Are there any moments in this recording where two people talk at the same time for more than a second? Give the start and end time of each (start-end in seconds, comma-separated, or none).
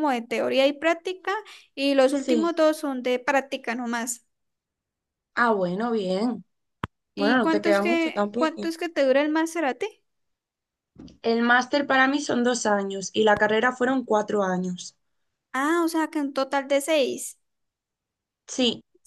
7.2-8.7